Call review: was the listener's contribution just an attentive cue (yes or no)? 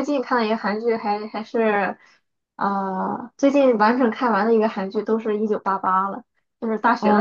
no